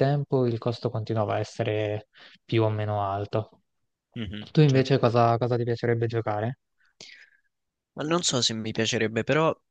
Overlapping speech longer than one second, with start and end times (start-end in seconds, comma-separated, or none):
none